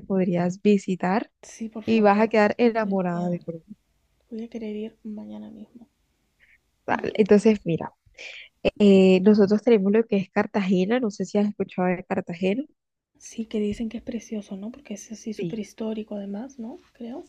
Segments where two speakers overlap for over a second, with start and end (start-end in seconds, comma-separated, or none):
1.9-3.4